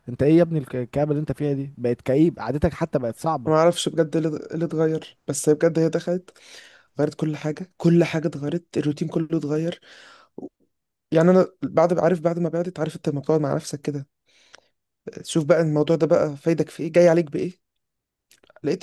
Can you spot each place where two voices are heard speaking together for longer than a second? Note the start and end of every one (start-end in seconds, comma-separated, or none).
none